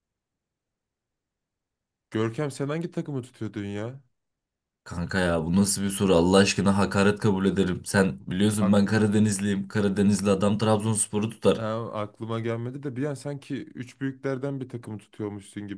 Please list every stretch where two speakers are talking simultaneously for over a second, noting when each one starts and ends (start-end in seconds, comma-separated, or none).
none